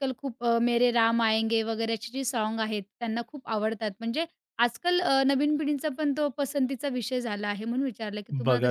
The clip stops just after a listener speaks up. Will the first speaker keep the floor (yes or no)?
no